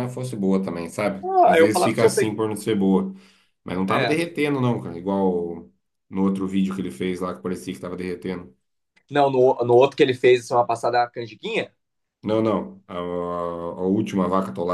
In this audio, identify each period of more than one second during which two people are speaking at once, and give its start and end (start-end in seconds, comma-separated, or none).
1.2-2.4